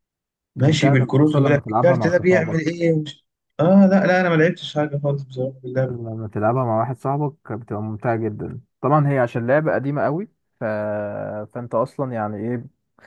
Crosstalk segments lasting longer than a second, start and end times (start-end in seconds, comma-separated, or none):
0.6-2.6